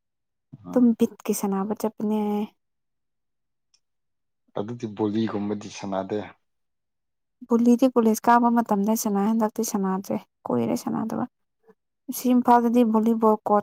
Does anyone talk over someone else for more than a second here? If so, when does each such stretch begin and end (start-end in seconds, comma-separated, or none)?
none